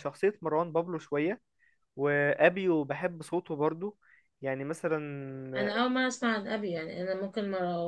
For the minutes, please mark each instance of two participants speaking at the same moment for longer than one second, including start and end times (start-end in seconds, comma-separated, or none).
none